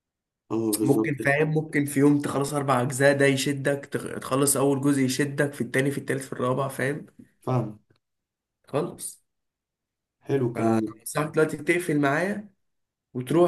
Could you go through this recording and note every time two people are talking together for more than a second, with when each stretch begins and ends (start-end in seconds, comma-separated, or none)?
none